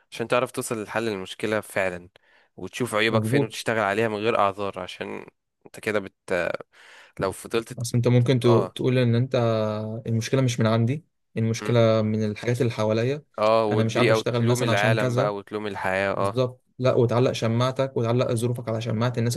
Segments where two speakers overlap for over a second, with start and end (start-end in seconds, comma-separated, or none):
13.7-15.3